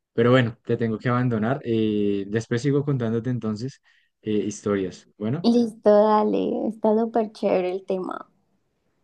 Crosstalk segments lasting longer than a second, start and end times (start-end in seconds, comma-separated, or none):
none